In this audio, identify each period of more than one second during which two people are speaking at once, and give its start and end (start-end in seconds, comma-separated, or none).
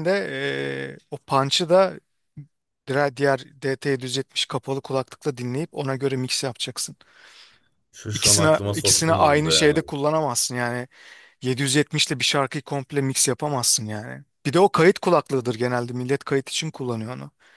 8.1-9.7